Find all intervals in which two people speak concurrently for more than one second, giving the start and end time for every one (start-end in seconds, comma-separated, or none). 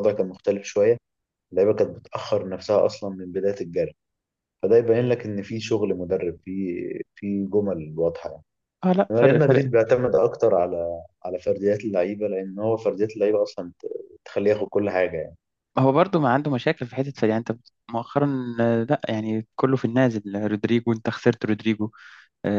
none